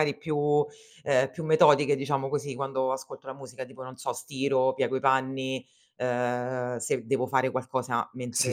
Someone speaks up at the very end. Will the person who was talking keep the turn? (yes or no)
no